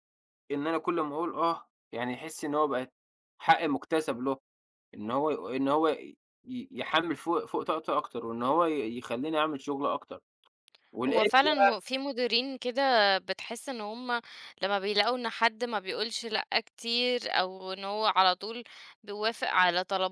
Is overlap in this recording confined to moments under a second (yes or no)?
yes